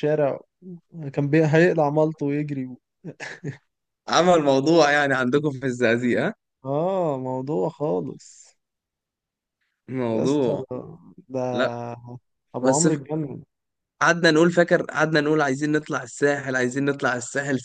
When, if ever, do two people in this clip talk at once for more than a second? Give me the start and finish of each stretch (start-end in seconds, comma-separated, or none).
none